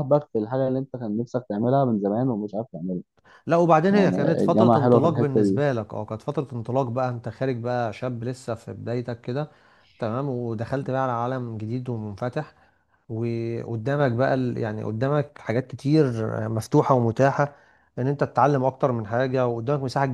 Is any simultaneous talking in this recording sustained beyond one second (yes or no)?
yes